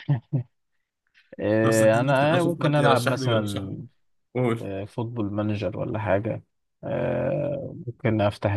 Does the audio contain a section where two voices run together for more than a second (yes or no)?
yes